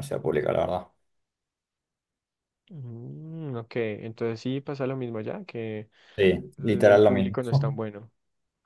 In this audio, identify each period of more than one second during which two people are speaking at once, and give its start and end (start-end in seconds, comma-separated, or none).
6.6-7.8